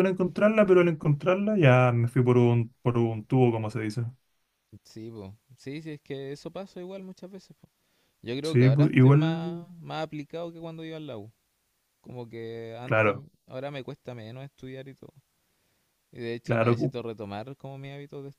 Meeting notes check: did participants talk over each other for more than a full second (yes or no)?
yes